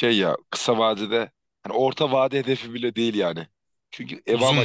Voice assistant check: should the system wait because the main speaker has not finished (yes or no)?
yes